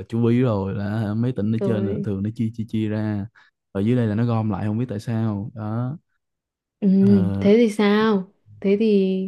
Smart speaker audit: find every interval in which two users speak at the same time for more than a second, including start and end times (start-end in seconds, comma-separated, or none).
none